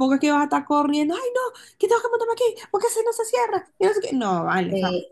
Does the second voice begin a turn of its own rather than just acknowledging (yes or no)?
yes